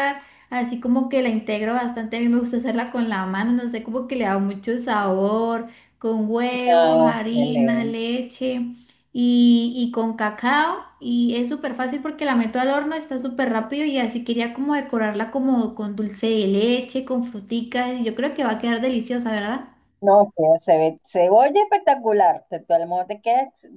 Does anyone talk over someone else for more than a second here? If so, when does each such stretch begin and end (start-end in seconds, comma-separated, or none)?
6.7-8.0